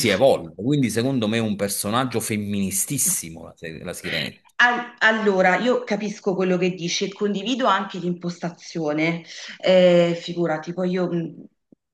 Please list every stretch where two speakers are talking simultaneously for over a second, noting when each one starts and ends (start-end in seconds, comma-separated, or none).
none